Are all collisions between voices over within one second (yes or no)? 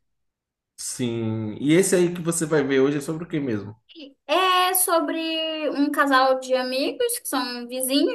yes